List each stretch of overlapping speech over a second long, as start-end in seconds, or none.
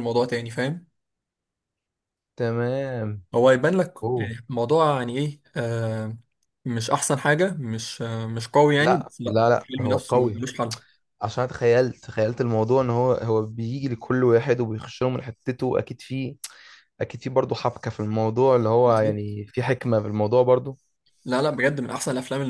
8.8-10.4